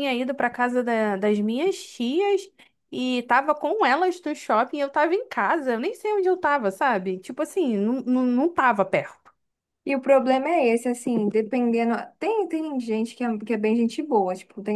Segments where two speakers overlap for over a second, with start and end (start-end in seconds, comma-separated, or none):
none